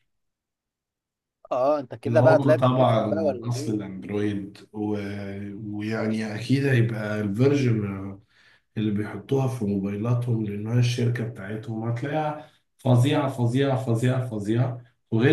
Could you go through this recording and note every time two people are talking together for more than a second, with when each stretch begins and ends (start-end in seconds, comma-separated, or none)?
2.1-3.9